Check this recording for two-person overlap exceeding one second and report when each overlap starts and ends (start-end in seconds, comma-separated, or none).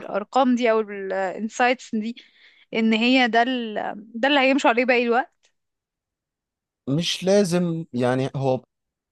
none